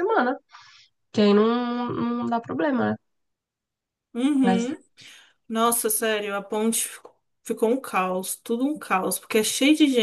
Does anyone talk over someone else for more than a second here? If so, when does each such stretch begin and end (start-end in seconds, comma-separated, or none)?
none